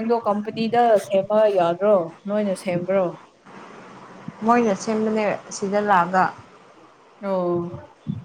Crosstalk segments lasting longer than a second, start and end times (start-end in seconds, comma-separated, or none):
none